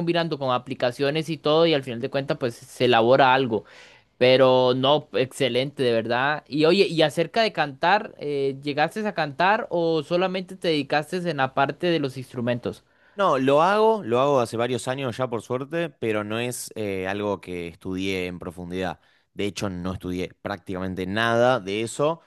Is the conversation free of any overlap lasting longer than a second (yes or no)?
yes